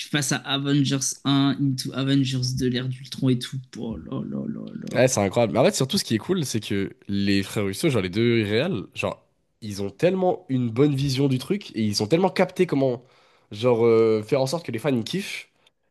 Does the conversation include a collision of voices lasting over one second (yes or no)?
no